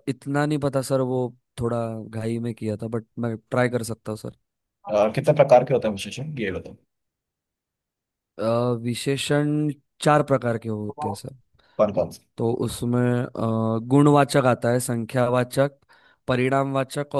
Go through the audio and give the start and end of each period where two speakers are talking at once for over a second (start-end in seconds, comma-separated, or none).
none